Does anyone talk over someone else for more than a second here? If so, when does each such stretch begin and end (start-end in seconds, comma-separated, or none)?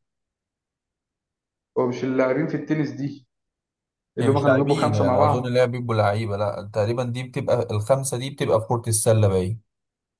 4.2-5.5